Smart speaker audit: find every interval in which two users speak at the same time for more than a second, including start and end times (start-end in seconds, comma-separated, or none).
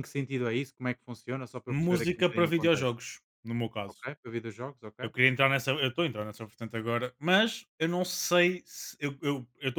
1.7-2.9